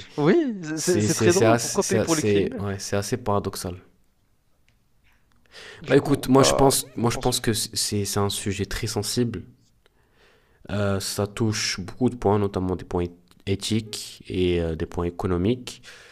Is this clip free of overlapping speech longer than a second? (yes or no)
no